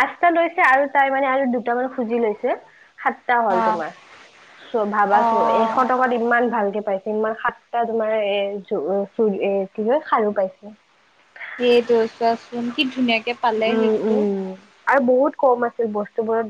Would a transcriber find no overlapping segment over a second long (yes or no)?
yes